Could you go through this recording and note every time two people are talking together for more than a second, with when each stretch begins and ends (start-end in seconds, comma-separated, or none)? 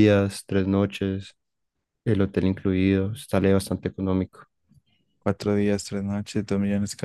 none